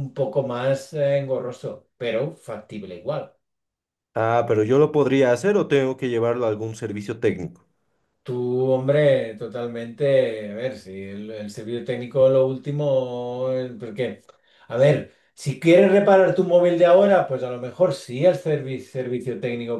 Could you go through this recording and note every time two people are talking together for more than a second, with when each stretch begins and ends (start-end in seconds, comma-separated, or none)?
none